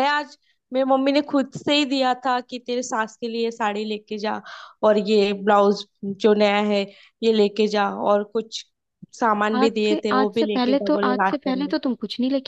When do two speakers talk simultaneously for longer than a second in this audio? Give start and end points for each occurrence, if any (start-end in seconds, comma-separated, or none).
9.5-11.7